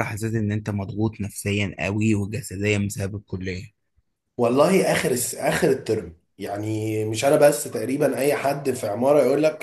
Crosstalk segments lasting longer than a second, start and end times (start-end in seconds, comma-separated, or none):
none